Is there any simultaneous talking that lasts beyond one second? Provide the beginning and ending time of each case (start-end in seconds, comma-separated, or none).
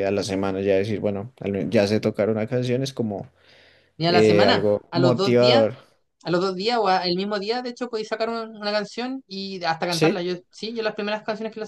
4.1-5.6